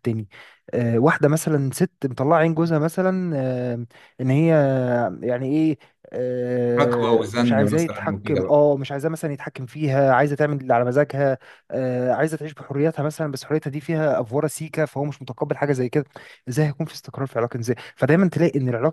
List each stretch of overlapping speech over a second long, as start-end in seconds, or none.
6.8-8.6